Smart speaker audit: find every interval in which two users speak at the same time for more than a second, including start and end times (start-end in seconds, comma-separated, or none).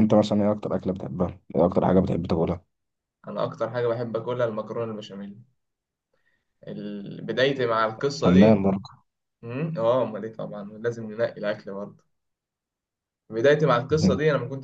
none